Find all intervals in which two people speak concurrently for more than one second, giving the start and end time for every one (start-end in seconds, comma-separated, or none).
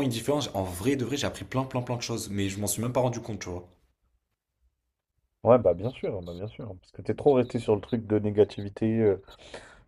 none